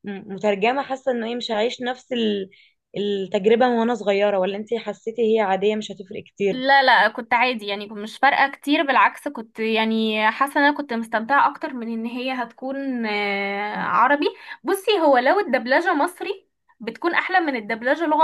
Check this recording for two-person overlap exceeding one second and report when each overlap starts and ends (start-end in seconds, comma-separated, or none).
none